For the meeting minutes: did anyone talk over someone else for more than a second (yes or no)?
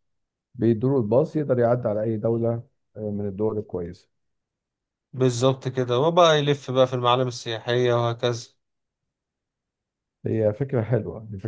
no